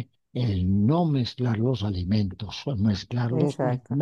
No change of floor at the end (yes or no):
yes